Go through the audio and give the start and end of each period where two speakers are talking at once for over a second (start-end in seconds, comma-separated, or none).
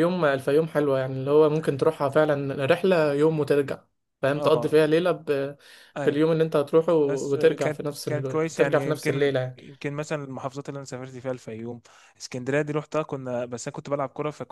7.1-9.6